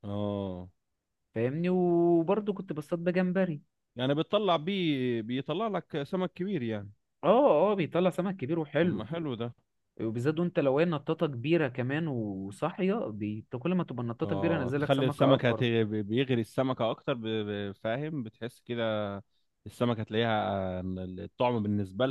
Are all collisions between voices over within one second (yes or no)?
no